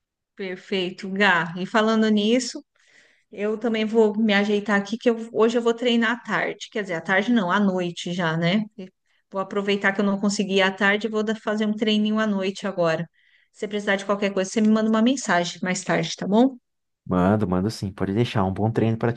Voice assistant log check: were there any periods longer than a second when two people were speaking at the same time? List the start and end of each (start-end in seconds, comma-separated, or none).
none